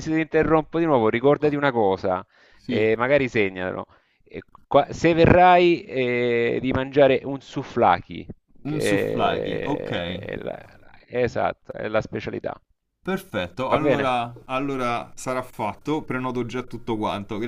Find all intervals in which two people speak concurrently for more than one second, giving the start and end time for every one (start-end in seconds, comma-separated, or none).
8.7-9.9